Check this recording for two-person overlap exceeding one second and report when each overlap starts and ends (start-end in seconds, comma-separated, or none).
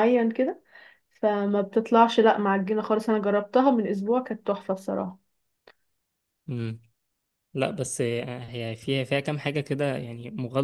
none